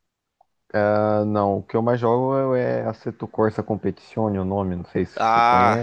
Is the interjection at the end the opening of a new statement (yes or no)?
yes